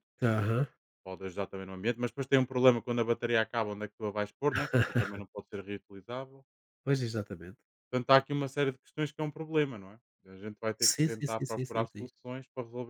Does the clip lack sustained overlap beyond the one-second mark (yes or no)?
no